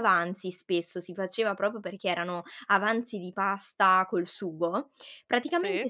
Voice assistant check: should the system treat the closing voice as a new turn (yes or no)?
no